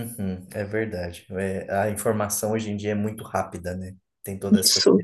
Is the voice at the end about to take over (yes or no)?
no